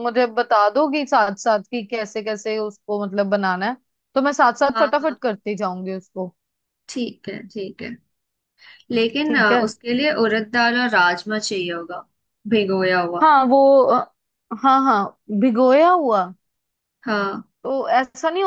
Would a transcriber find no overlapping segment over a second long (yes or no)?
yes